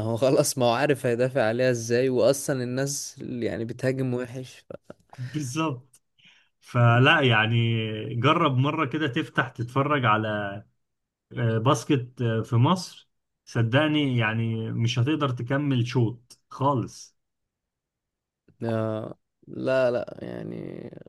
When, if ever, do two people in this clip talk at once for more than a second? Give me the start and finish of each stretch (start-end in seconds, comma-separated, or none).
none